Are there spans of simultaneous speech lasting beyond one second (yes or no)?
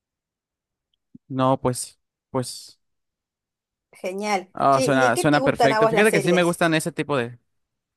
yes